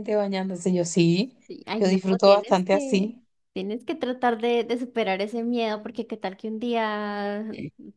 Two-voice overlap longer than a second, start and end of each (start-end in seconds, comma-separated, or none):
1.8-3.1